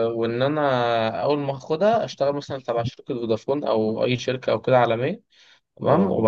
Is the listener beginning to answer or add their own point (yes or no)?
no